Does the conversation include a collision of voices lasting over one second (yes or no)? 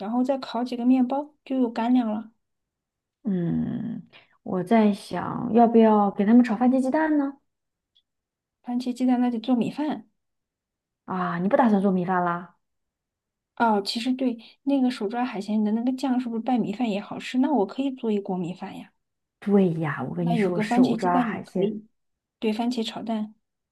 yes